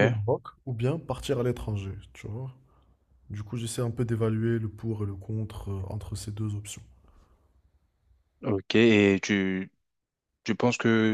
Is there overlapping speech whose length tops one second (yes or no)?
no